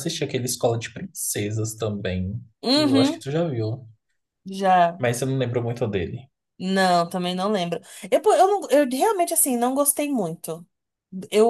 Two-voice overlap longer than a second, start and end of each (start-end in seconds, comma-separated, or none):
none